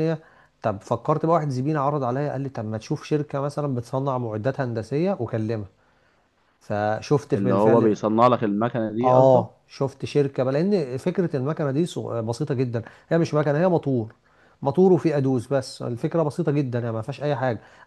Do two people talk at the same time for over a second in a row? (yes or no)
no